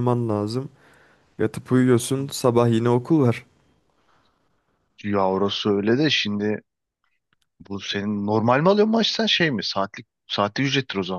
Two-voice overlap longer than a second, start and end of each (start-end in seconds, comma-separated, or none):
none